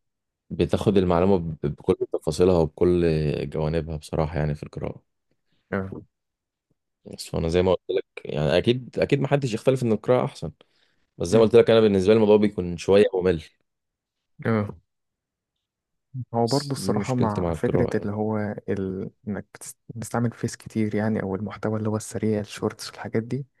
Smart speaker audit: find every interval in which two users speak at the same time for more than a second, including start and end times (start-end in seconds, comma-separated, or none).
16.4-18.1